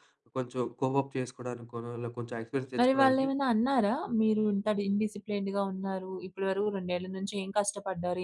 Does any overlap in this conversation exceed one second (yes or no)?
no